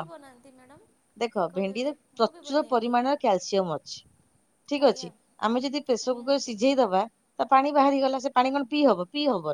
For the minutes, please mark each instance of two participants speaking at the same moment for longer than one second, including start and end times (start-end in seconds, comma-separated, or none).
1.2-2.9